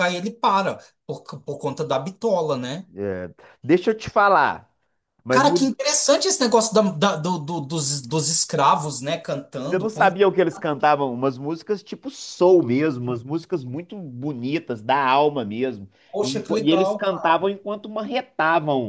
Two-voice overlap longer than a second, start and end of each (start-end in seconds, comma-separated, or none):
16.1-17.5